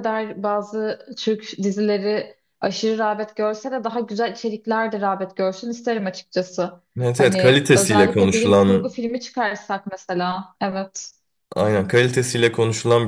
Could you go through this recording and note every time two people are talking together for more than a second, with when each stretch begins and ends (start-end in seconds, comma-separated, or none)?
7.2-9.0